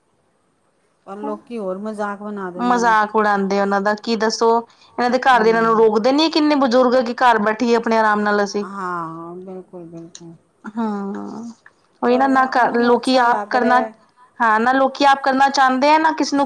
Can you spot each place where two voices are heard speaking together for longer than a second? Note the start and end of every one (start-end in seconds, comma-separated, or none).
12.1-13.8